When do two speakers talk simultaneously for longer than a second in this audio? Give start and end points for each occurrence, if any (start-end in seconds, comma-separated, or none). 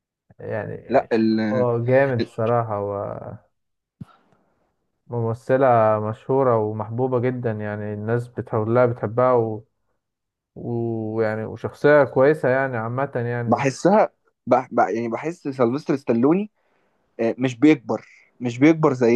none